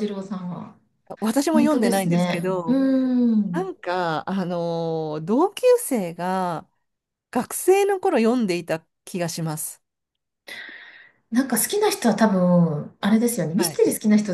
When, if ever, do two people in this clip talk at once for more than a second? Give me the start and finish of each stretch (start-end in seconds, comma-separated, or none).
1.5-2.8